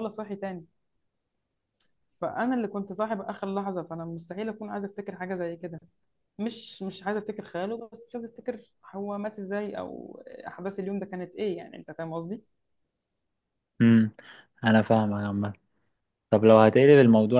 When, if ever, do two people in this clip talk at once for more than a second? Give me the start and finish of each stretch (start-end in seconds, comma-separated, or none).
none